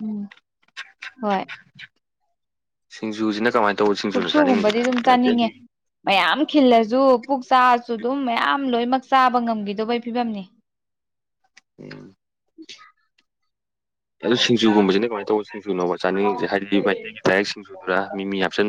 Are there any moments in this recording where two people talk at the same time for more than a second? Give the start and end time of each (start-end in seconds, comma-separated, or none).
4.1-5.5